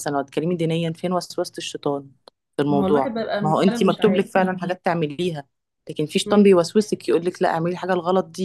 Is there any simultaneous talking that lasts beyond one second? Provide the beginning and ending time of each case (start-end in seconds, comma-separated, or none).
2.7-4.2